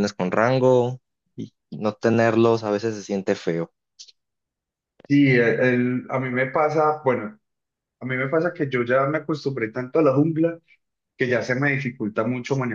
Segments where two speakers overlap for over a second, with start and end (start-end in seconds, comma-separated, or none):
none